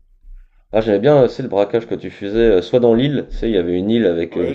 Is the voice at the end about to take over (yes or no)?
yes